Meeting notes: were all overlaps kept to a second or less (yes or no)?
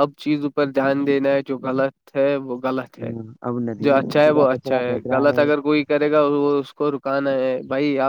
no